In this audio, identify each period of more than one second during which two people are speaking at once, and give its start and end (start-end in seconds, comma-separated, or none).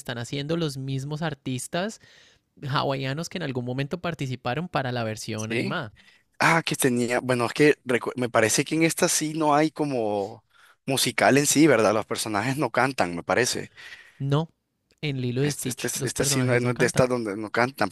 15.4-17.1